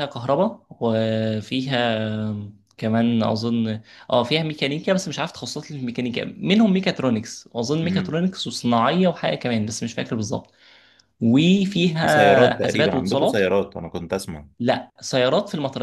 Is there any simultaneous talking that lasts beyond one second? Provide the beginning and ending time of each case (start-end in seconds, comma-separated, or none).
12.0-13.4